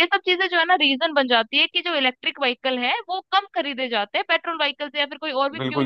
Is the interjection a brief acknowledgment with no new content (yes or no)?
no